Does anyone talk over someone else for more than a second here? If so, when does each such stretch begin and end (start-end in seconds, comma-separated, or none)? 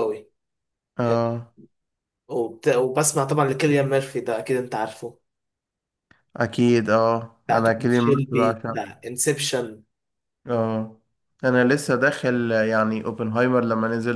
7.5-9.0